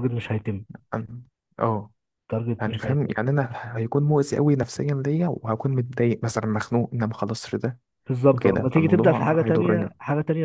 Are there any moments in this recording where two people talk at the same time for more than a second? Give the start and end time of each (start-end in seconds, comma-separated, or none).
8.3-9.9